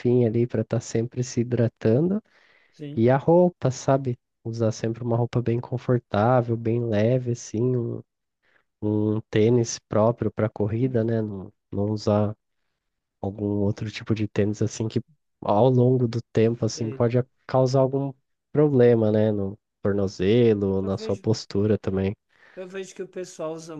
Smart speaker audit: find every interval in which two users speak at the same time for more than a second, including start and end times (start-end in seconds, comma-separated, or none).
none